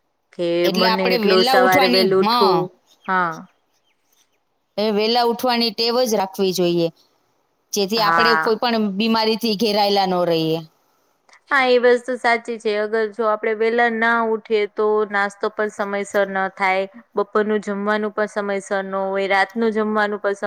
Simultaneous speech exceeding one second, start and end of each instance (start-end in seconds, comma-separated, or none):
0.7-2.5